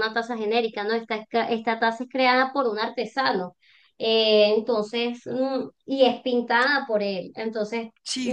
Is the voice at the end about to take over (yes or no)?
no